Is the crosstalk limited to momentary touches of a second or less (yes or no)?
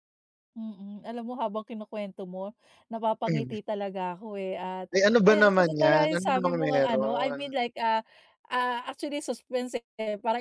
no